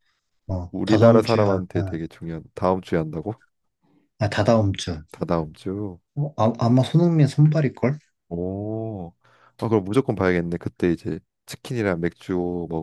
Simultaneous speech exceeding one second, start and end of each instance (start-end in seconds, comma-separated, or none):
0.7-2.0